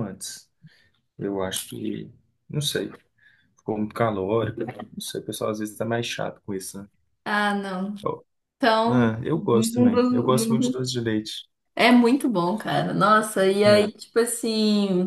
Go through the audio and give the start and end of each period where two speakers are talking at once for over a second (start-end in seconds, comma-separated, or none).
8.9-10.8